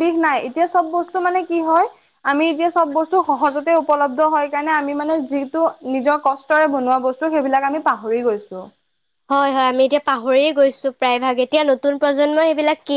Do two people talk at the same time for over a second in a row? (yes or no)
no